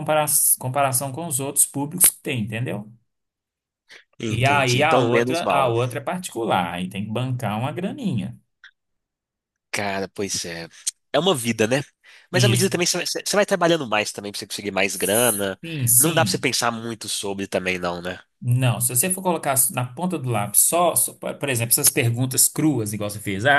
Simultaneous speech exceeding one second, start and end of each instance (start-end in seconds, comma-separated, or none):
4.3-5.7